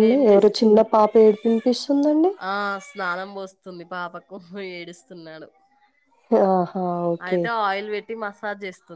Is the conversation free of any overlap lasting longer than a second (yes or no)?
yes